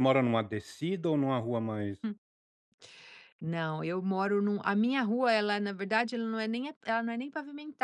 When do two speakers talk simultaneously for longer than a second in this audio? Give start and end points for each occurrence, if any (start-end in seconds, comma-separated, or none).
none